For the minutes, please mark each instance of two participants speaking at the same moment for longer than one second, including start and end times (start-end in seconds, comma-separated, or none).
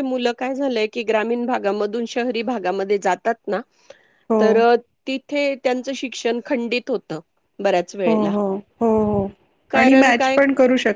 none